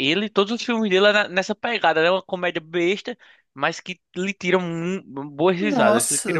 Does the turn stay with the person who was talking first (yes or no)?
no